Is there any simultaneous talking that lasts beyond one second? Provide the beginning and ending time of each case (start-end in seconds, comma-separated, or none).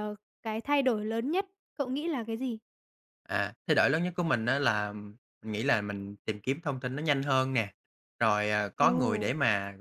none